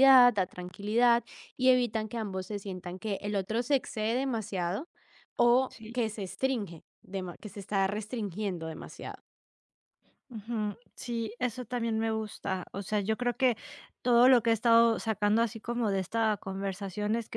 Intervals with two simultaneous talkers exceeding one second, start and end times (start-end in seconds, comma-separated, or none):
none